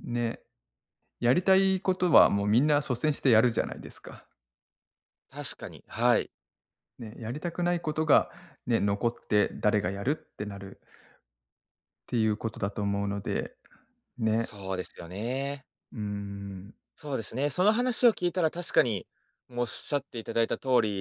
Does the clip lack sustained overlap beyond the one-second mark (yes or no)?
yes